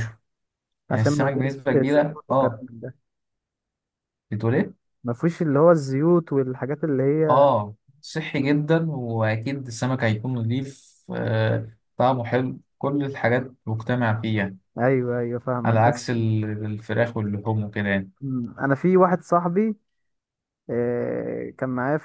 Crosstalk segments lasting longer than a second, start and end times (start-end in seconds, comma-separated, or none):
0.9-2.6